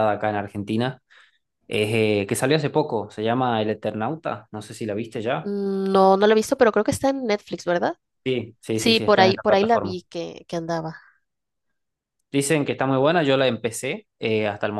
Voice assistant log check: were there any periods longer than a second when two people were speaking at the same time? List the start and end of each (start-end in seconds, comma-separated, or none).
8.7-10.0